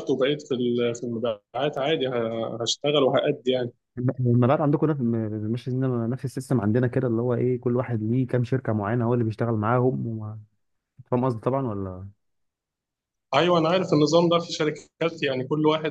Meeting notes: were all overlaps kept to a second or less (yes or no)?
yes